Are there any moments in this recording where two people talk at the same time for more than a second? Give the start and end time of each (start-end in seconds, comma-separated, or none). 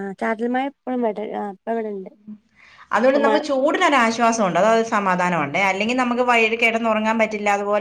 none